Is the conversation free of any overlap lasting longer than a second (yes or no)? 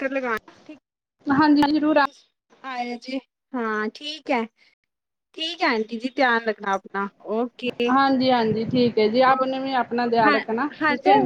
yes